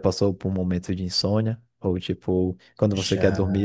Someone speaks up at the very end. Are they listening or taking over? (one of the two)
listening